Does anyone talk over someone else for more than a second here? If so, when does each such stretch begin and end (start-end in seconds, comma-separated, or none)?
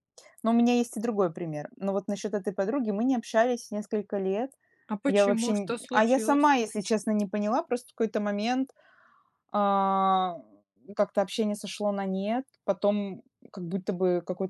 5.0-6.5